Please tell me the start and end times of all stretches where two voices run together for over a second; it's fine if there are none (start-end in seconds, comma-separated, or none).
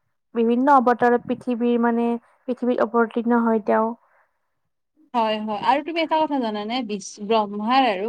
none